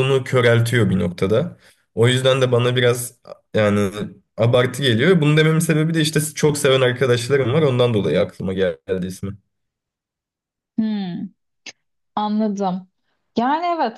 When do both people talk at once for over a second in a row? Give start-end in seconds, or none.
none